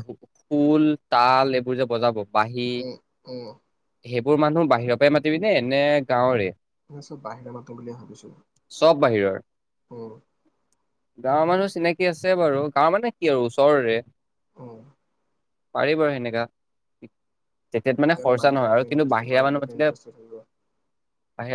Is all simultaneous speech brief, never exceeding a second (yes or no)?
no